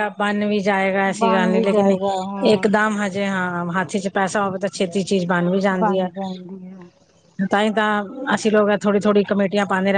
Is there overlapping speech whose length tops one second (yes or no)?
yes